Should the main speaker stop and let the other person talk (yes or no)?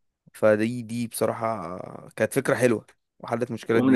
yes